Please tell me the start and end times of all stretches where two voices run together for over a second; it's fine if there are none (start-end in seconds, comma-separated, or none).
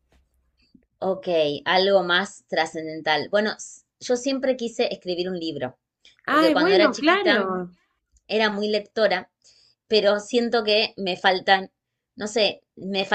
6.3-7.5